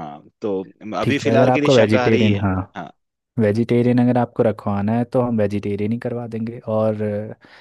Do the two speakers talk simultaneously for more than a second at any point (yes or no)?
yes